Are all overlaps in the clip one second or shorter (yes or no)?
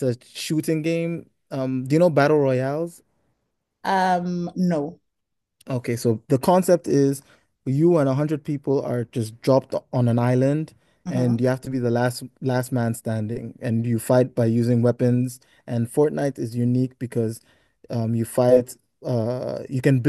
yes